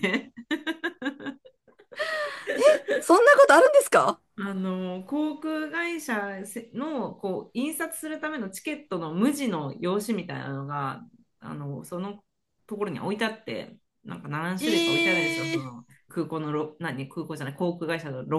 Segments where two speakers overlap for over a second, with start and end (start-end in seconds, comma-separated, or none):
14.6-15.8